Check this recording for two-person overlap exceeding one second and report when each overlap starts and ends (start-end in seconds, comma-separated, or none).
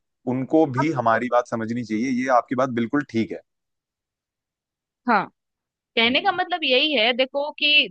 none